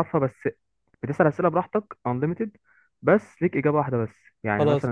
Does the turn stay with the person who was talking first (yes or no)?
yes